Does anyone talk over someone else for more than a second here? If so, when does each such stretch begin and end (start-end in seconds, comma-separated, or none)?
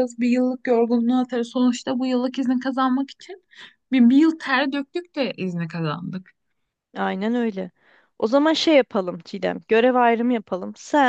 none